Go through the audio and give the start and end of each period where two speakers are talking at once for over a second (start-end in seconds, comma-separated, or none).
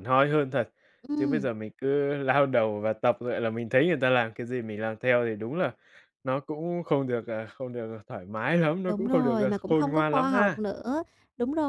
8.9-10.6